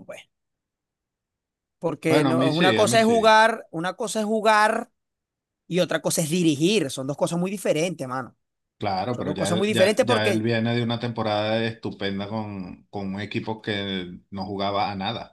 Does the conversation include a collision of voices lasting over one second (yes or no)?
yes